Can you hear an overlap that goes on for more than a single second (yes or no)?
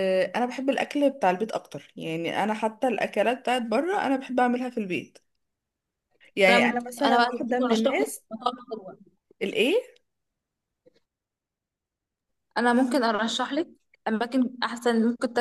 yes